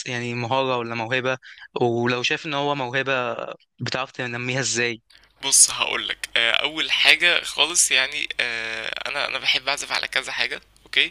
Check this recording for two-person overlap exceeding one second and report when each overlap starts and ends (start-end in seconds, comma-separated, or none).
none